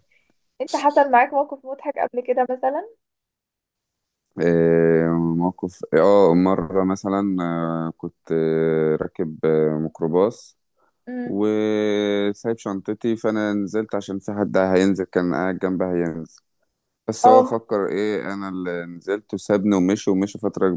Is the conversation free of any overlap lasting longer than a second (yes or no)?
yes